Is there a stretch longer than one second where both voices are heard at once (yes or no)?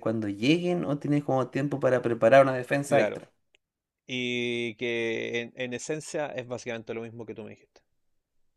no